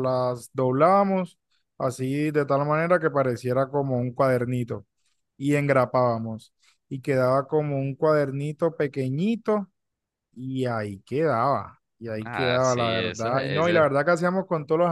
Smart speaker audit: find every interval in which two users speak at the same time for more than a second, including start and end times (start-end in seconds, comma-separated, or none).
12.2-13.8